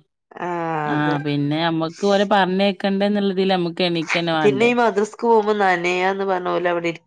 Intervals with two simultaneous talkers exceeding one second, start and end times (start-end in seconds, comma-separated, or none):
none